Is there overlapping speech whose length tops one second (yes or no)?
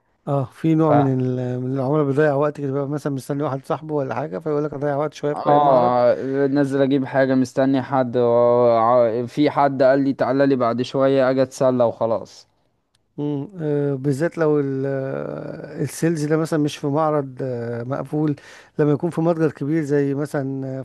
no